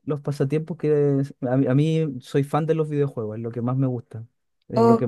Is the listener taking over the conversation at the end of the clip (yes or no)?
no